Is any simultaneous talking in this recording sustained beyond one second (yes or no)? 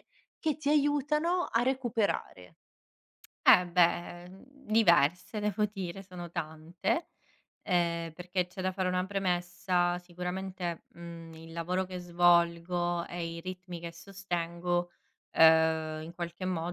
no